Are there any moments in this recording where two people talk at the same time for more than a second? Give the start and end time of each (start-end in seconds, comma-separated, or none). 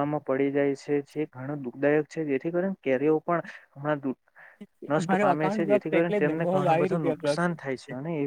5.1-7.4